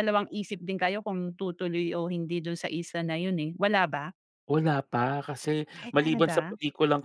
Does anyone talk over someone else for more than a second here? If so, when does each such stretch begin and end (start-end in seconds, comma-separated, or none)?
none